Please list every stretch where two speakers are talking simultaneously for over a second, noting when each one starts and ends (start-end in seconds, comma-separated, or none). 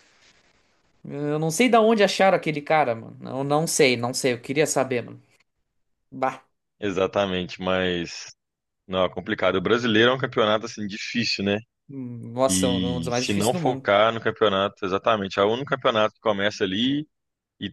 12.5-13.9